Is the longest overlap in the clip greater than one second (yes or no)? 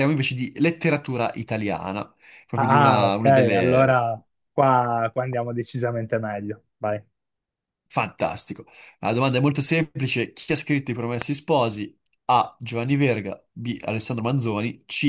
yes